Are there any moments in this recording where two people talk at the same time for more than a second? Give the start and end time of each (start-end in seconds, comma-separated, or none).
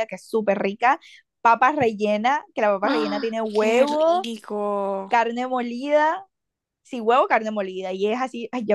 2.8-4.3